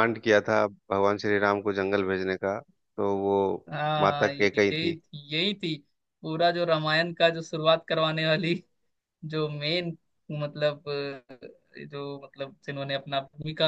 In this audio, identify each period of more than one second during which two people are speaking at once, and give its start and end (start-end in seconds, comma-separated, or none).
none